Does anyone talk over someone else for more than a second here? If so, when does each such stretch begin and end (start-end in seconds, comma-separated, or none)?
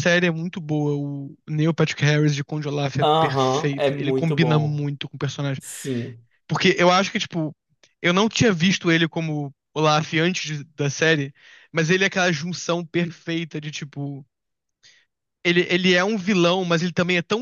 3.0-4.9